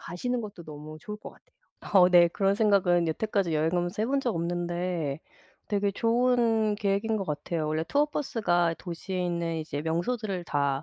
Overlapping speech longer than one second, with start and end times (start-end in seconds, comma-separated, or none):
none